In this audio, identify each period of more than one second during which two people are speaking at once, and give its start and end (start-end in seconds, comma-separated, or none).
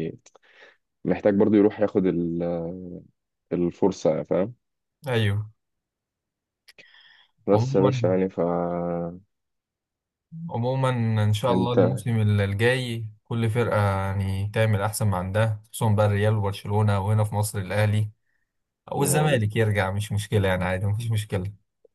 none